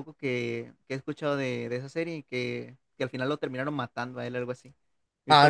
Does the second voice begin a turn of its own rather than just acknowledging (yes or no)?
yes